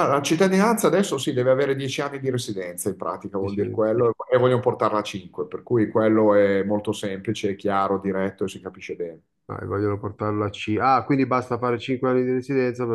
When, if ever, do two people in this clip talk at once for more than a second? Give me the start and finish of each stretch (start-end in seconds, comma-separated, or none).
none